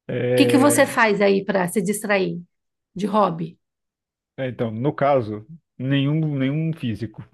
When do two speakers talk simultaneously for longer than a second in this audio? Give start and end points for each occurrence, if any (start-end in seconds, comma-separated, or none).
none